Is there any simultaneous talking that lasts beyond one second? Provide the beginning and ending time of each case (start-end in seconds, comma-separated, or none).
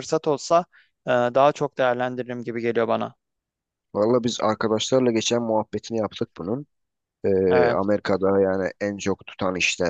none